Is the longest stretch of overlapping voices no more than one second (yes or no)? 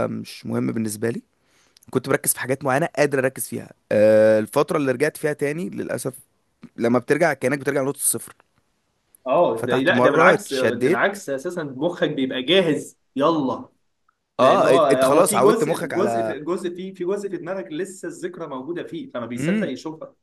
no